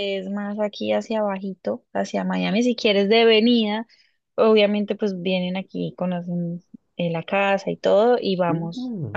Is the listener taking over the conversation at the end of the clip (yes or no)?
yes